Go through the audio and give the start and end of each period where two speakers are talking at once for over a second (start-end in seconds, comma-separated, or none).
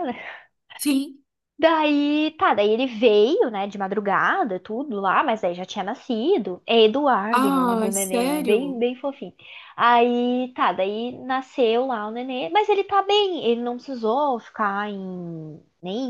7.4-8.8